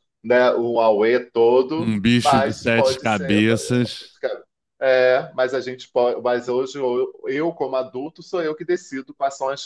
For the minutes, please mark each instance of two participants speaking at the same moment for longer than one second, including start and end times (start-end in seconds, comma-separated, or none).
1.8-3.4